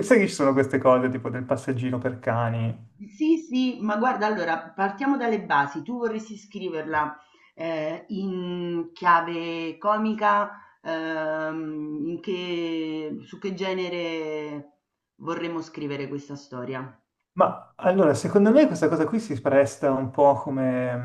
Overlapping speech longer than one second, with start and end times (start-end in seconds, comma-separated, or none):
none